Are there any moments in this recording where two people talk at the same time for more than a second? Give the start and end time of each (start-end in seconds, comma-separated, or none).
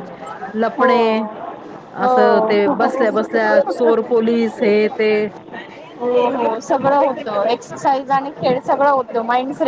none